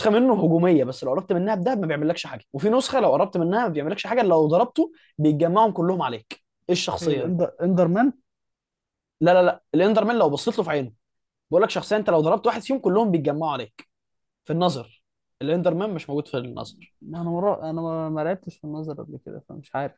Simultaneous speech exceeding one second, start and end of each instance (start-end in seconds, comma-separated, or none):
none